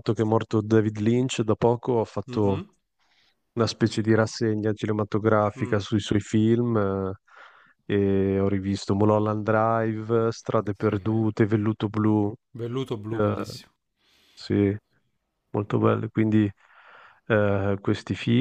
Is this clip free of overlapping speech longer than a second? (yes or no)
yes